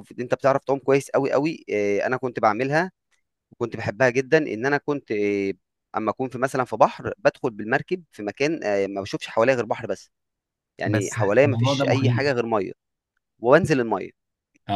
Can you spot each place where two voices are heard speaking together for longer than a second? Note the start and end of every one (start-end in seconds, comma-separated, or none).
10.8-12.3